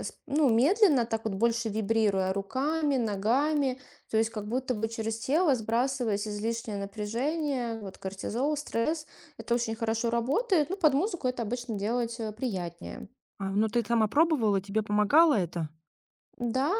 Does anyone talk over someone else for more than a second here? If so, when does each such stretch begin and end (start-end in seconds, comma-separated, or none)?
none